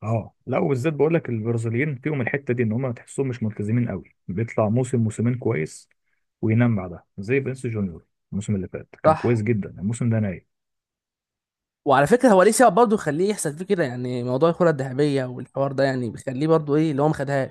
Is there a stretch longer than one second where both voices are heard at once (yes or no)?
no